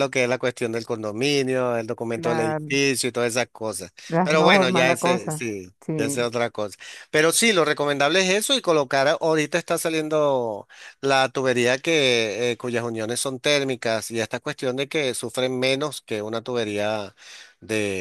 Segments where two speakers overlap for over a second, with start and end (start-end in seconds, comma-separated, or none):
4.1-6.3